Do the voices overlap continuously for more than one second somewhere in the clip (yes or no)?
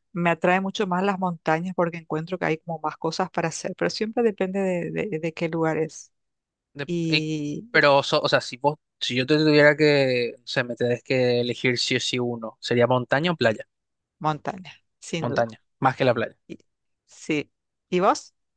no